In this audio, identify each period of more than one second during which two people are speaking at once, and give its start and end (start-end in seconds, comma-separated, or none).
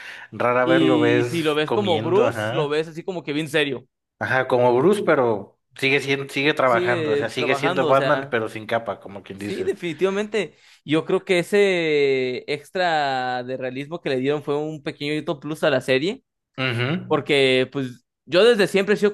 0.6-2.8, 6.6-8.4